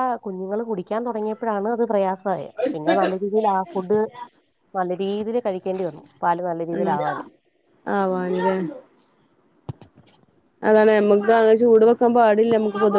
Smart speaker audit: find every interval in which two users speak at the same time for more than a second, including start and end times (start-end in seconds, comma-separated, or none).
none